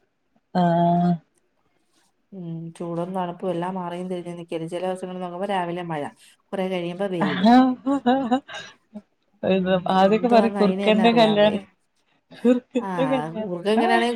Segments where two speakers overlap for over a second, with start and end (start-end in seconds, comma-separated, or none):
10.1-11.5